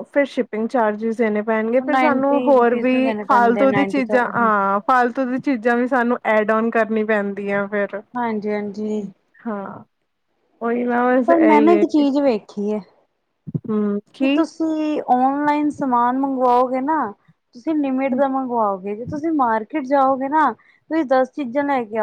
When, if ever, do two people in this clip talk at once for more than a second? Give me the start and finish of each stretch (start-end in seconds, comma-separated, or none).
1.8-4.5